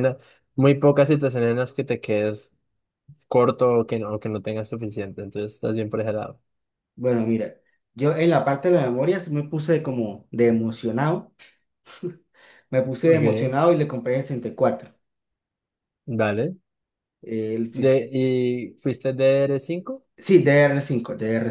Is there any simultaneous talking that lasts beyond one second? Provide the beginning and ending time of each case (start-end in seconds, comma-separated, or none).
none